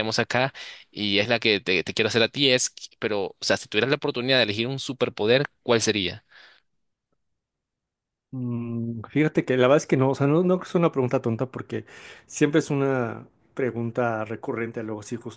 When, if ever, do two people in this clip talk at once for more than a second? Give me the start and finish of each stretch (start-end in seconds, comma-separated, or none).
none